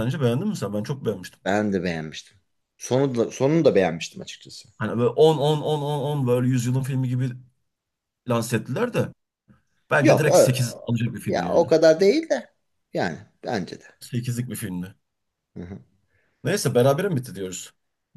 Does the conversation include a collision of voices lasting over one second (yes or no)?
no